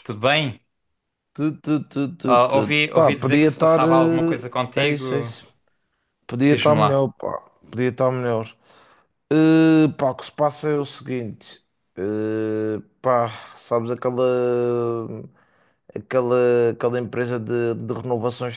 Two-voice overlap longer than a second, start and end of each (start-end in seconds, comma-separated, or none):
2.3-5.3